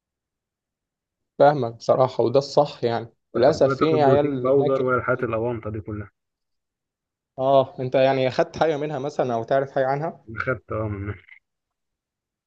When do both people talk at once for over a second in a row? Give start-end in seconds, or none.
3.4-4.8